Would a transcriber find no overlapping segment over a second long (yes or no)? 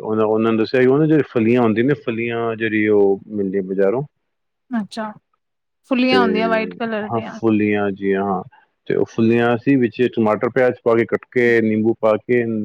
no